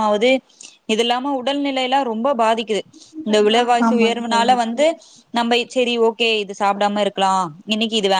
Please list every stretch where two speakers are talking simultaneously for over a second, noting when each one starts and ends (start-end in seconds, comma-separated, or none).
3.3-4.8